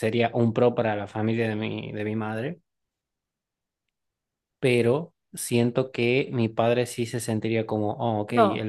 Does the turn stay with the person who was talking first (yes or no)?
no